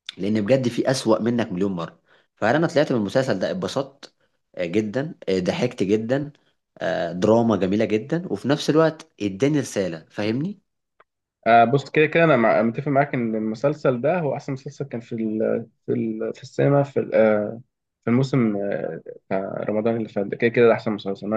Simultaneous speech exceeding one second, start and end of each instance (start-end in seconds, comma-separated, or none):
none